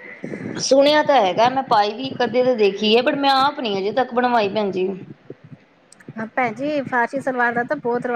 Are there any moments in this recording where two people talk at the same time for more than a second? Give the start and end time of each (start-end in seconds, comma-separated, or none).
none